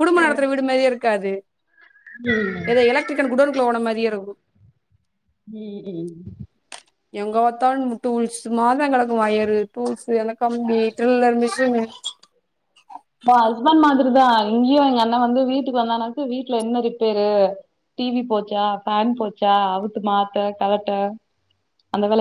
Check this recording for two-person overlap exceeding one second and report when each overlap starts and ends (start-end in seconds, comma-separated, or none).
none